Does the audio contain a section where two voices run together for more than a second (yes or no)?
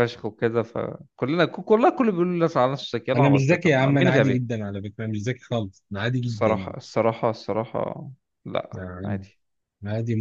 yes